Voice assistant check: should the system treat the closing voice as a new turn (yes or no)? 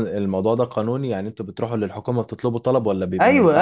yes